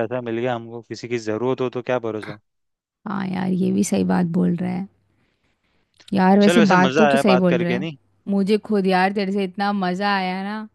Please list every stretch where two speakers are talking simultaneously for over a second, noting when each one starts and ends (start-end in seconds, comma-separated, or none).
6.4-7.9